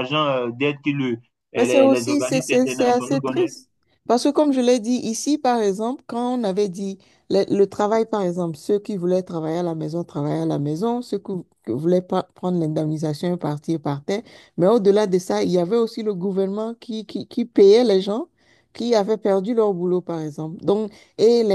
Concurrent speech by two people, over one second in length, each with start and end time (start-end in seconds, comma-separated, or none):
1.6-3.5